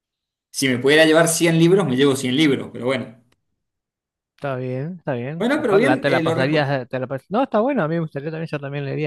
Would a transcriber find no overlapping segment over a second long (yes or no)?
no